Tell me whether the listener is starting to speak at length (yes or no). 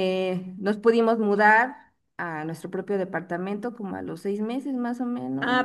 yes